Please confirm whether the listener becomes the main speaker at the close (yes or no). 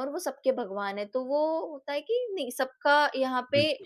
no